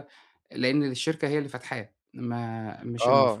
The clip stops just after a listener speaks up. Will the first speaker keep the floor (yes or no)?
no